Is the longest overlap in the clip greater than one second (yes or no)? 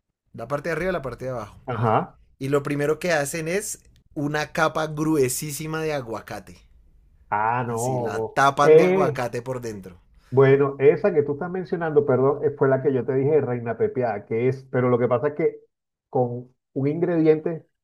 yes